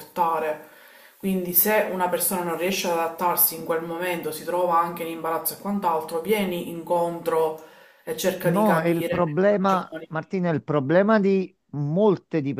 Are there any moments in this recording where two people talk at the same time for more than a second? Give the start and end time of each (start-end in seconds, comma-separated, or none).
8.4-10.1